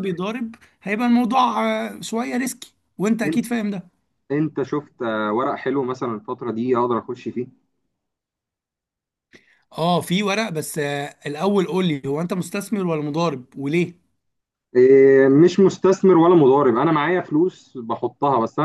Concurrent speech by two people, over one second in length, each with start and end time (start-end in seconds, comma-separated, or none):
none